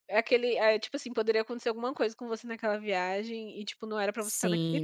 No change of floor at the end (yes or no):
no